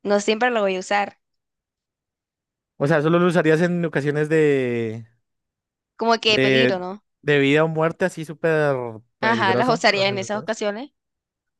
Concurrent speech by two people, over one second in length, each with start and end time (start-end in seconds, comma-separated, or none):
9.2-10.6